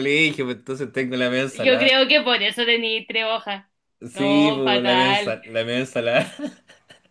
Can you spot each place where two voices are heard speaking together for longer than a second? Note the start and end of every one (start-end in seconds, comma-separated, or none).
4.2-5.4